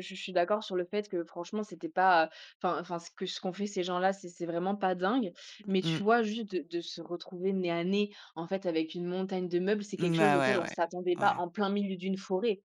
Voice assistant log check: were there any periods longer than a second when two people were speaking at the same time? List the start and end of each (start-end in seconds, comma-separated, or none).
10.0-11.4